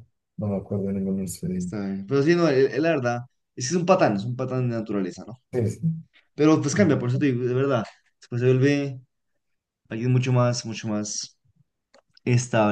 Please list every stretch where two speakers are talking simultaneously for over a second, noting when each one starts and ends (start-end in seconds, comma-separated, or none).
none